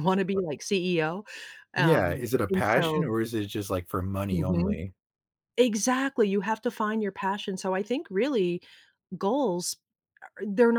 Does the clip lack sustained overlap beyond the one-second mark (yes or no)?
no